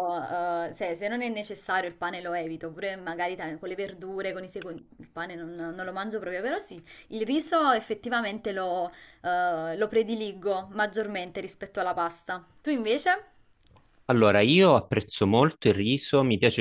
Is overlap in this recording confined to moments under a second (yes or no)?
yes